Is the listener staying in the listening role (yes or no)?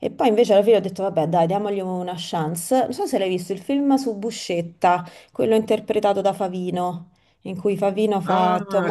no